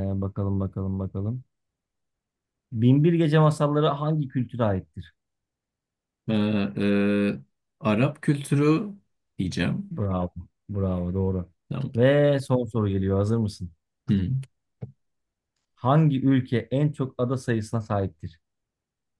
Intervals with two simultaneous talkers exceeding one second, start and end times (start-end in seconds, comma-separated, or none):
none